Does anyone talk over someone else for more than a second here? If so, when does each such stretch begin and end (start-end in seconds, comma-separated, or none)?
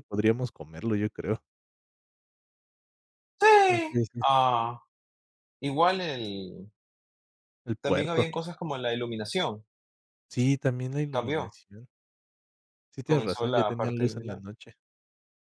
13.0-14.4